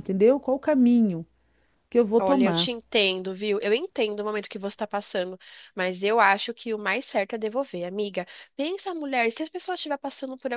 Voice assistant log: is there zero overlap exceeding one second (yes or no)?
yes